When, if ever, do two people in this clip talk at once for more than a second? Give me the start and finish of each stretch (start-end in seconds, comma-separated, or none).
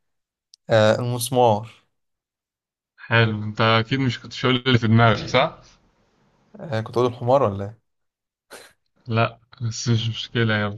none